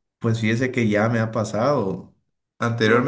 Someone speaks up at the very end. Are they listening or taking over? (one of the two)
listening